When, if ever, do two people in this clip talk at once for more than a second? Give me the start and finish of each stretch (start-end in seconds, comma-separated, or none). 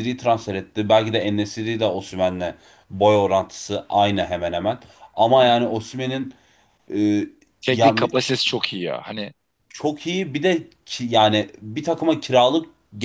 none